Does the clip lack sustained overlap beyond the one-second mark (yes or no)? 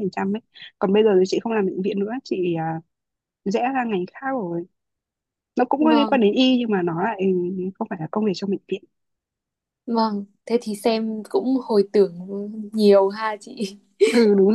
yes